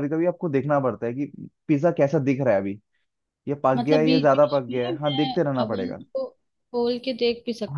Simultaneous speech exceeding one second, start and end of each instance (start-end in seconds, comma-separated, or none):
3.8-6.0